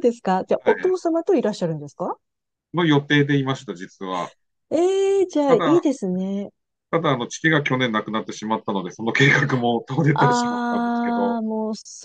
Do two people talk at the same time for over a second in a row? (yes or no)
yes